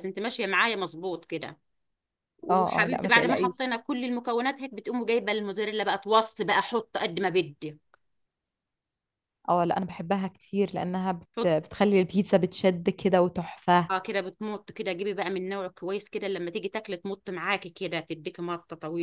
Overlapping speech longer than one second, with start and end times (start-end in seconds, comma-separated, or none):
2.5-3.7